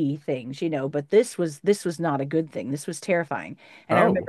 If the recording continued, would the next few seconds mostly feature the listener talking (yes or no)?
no